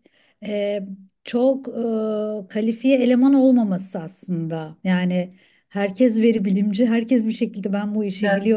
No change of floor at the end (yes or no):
yes